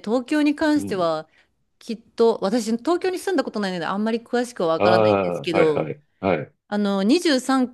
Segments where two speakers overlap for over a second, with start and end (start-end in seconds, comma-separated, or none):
4.8-6.0